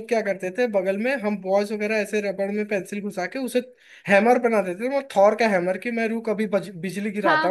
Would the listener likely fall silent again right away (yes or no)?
no